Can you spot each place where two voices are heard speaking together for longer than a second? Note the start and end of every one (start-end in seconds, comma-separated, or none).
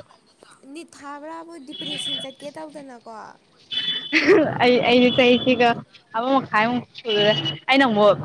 none